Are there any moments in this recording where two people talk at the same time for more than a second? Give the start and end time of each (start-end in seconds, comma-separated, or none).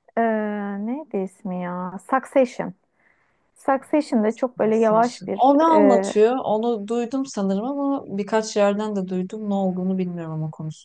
4.5-6.1